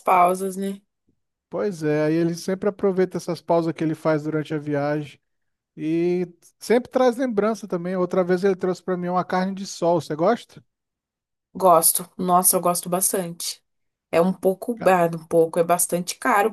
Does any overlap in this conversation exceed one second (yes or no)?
no